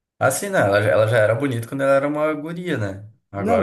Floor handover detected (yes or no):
yes